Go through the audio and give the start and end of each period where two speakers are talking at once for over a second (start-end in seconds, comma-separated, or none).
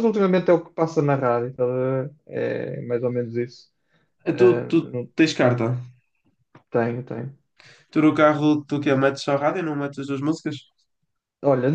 none